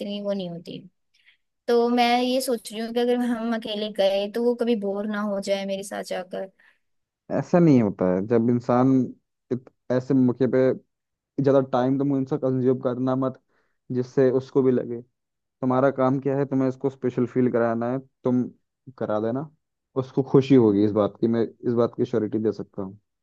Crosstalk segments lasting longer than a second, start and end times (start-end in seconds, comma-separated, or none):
none